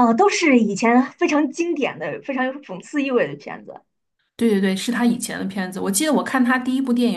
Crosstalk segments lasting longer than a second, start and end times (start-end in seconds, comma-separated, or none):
none